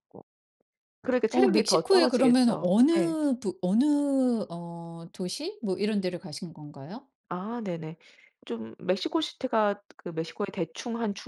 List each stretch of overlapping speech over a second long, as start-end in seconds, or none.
1.3-3.2